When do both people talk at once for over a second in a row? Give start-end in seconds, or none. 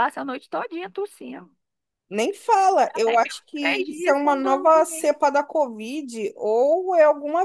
2.9-5.2